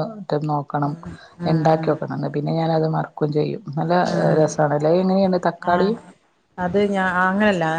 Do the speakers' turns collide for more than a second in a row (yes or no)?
no